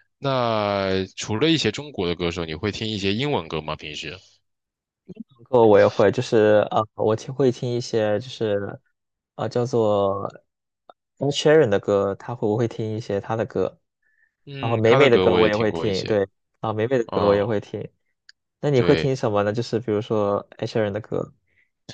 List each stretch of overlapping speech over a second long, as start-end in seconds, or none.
14.6-16.2